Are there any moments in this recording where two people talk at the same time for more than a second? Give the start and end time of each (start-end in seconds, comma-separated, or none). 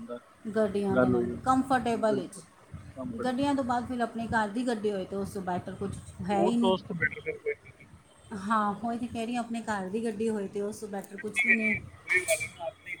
0.9-2.3